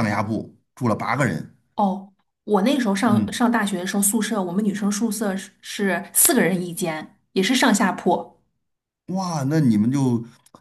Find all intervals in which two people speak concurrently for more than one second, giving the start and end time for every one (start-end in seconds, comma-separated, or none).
none